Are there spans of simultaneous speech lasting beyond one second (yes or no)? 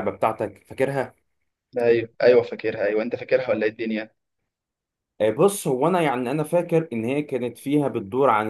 no